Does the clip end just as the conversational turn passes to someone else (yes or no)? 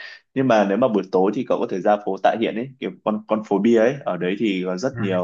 no